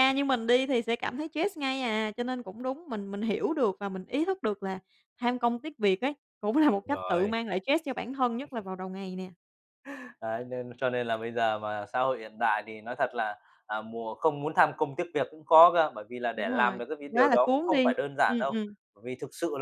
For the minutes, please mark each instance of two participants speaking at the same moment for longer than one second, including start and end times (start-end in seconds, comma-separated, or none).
16.3-18.5